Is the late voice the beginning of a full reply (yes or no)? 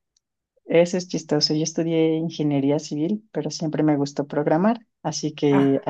no